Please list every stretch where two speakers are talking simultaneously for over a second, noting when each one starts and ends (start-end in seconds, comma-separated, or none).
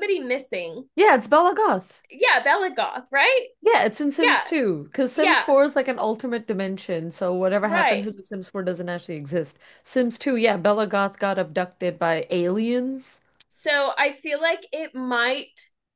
none